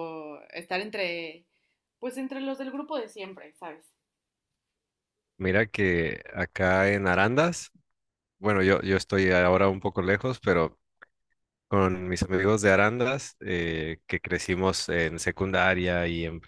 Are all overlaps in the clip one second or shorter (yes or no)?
yes